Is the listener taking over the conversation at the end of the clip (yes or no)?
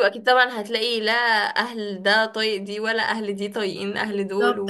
yes